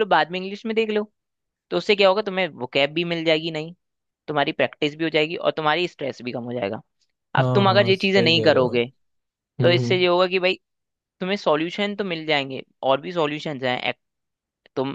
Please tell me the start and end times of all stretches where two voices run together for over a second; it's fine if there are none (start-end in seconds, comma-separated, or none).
7.4-8.8